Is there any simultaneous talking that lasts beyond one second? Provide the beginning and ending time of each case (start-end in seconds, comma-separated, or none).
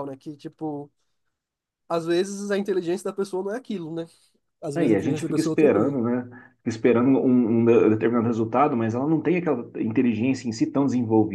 4.7-6.0